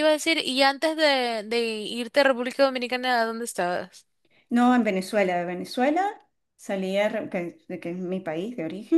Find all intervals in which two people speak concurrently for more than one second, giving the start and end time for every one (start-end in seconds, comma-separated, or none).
none